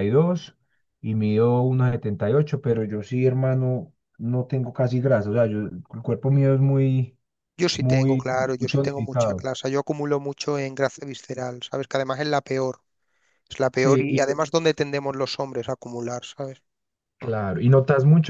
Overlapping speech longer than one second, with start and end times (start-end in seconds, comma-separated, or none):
7.8-9.5